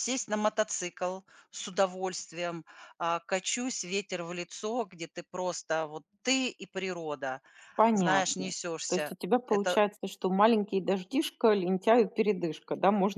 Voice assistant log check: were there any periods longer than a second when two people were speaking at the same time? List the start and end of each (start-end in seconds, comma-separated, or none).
7.9-9.8